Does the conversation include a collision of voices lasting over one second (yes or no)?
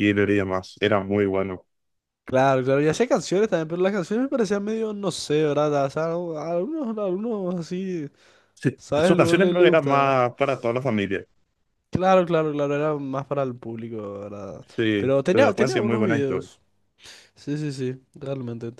yes